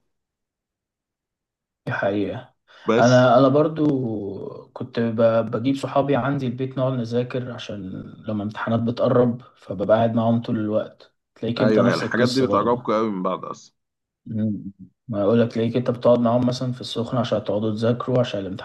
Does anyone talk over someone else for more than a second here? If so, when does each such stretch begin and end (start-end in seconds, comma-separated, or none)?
11.6-12.9